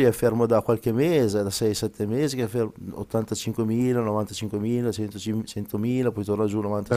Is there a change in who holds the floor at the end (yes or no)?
yes